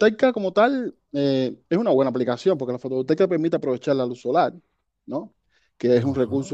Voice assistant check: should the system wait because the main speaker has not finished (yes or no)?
yes